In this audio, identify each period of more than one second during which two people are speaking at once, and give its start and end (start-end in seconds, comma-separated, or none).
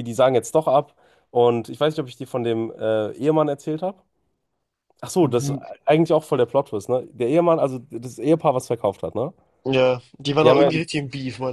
none